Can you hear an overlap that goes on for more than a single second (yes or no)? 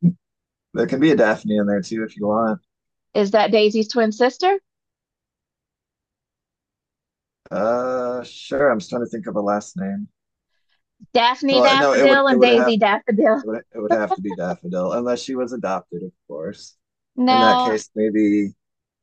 yes